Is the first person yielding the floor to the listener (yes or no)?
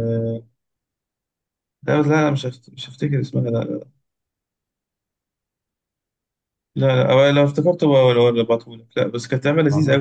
no